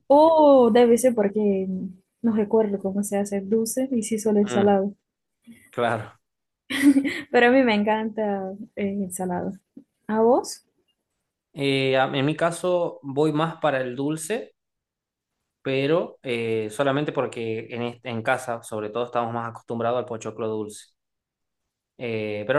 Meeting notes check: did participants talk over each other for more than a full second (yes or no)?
no